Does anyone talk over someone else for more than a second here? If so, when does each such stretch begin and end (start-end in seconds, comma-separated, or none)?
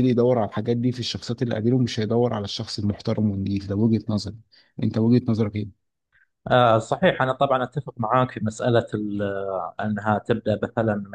none